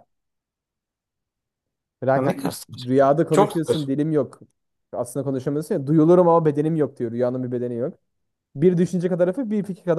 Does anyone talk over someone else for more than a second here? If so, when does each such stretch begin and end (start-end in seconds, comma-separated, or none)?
2.1-3.9